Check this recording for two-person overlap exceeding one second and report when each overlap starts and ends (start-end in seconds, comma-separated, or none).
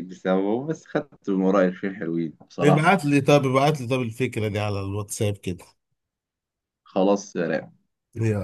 none